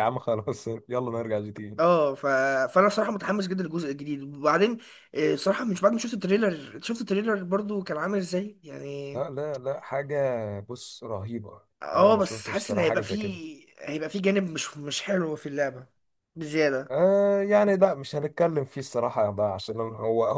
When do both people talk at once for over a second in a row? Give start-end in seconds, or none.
11.8-13.4